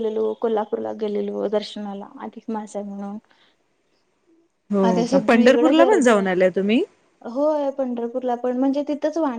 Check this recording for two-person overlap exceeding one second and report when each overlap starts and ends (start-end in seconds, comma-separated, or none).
4.9-6.3